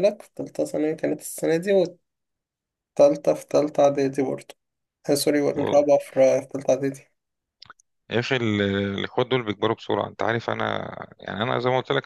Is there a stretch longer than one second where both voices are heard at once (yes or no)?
no